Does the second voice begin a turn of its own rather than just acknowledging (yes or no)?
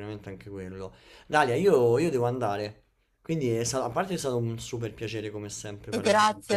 yes